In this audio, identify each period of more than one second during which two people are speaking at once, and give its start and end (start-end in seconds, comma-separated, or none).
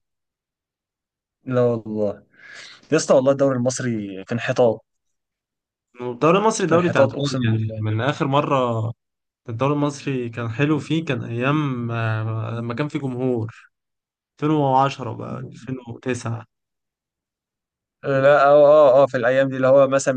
6.7-7.8